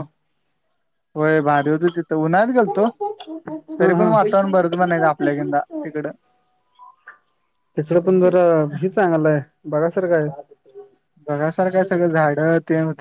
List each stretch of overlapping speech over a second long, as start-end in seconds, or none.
none